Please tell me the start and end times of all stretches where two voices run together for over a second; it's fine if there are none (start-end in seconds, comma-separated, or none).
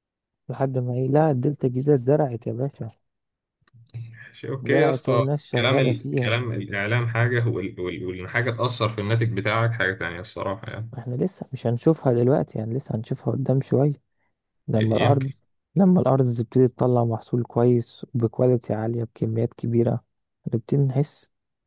4.6-6.4